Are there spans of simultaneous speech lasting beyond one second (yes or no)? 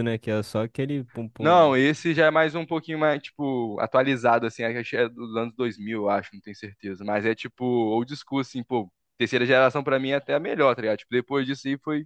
no